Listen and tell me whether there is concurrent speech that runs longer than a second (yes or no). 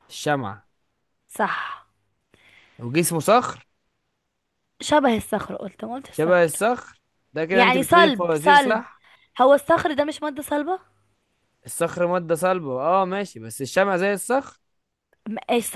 yes